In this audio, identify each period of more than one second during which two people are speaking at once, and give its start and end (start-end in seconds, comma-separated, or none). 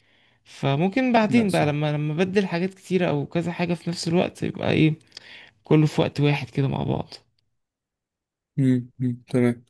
none